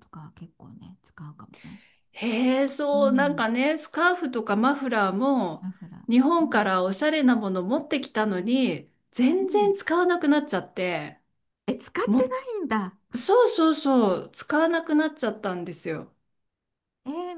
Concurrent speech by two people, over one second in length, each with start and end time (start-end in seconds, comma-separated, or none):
none